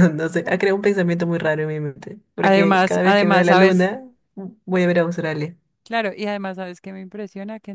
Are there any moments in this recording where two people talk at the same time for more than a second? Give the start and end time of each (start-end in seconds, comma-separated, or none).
2.4-3.9